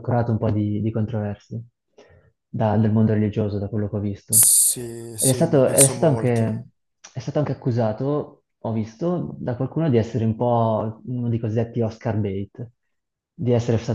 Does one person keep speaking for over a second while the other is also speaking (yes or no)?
yes